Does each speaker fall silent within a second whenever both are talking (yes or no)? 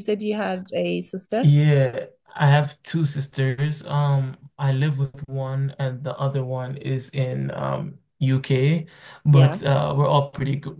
yes